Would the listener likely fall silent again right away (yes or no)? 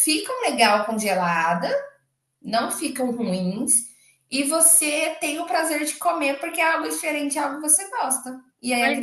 yes